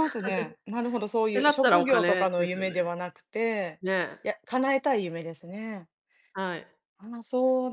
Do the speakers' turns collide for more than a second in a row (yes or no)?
yes